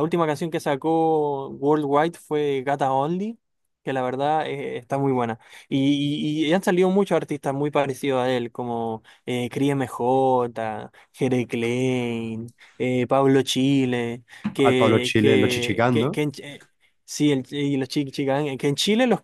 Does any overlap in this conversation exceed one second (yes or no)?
yes